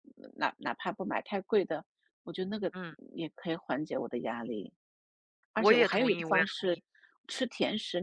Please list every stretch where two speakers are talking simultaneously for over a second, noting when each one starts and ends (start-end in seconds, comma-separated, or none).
5.5-6.8